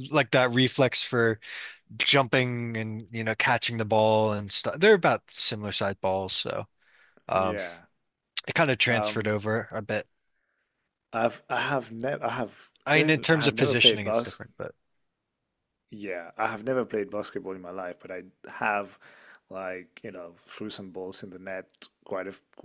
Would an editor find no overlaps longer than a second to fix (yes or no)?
no